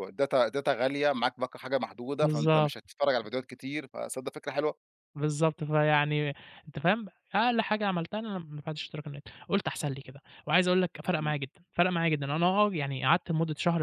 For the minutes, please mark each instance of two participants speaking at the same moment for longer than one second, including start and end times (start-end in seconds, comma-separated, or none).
none